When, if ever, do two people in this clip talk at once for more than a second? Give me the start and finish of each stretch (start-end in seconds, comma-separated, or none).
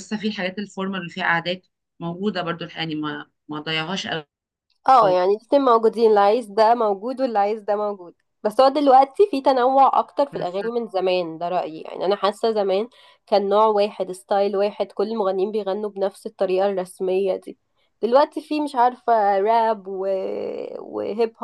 none